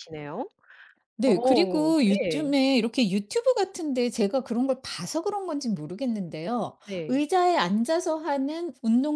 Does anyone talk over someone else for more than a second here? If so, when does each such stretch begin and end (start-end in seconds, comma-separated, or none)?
1.2-2.5